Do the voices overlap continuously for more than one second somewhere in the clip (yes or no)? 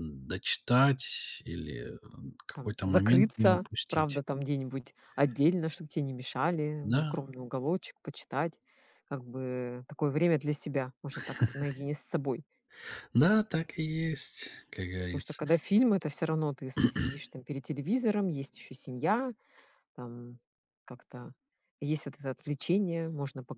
yes